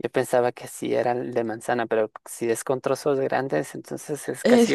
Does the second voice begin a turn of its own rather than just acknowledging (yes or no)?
yes